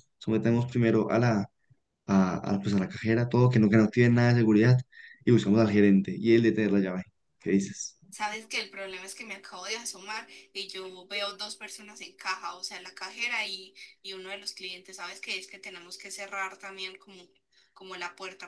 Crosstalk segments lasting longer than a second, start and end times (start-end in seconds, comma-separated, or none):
none